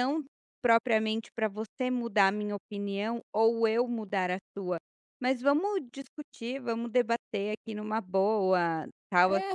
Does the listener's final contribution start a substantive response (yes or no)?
yes